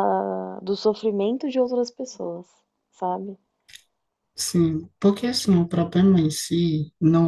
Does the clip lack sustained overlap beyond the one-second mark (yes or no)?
yes